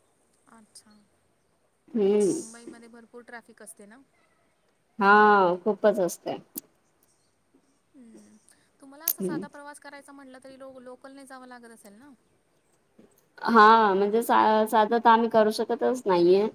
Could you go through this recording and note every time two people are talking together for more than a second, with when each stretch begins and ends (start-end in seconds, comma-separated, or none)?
none